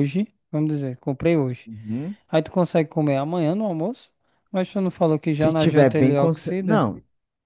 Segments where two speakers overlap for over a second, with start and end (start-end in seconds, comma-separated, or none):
5.3-6.9